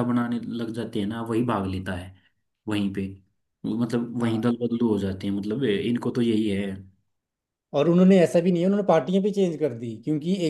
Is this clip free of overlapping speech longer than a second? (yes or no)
yes